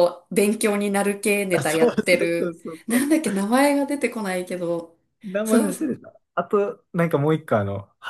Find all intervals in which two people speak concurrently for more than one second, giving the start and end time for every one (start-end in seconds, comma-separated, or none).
1.5-3.1